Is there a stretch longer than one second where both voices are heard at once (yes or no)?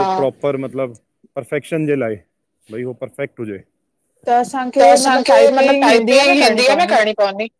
yes